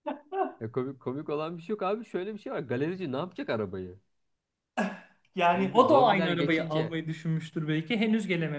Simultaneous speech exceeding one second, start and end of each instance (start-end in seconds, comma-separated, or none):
5.5-6.9